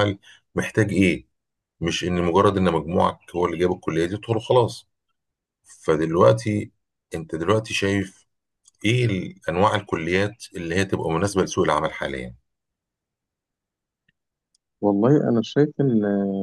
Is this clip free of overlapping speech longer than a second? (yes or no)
yes